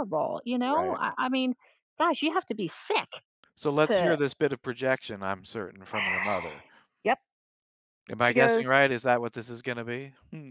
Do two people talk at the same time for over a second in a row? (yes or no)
no